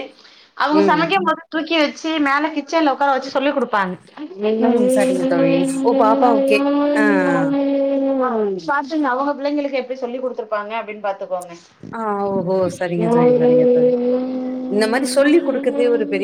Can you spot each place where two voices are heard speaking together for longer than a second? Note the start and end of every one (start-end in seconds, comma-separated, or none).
none